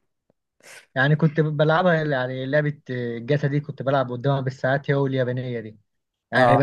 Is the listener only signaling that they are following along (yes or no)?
yes